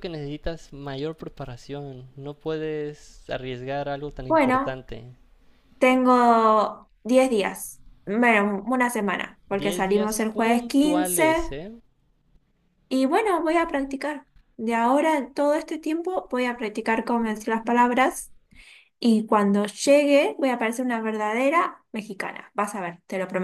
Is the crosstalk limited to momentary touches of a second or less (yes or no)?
no